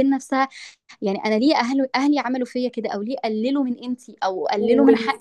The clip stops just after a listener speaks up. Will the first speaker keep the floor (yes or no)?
no